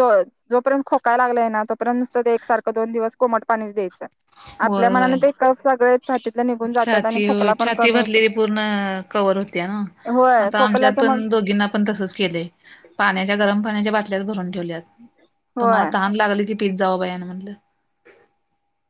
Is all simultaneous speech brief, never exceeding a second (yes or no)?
no